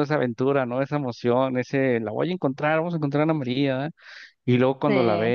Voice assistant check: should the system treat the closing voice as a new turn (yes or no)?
no